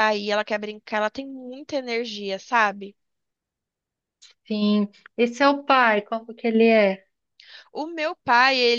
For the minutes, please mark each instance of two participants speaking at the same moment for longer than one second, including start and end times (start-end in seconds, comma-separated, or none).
none